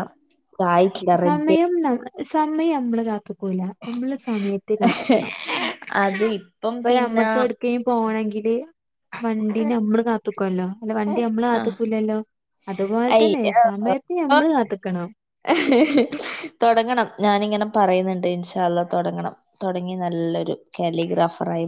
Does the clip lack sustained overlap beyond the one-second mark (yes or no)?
yes